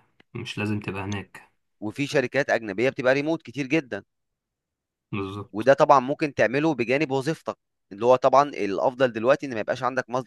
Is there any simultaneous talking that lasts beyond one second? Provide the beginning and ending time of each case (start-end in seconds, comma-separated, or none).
none